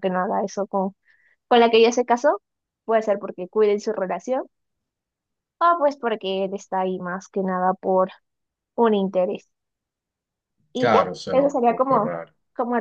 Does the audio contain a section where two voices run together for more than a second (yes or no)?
yes